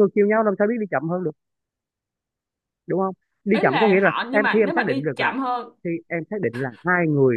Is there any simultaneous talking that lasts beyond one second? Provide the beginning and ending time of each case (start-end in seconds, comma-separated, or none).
3.5-5.3